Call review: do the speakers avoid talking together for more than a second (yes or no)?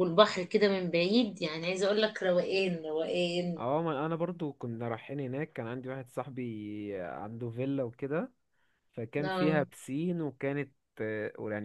yes